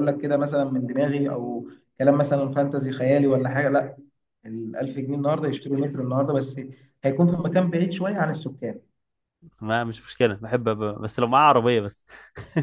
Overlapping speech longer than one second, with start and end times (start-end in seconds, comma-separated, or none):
none